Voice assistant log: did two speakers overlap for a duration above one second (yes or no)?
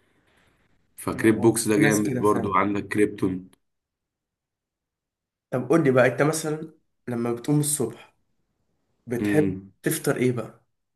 yes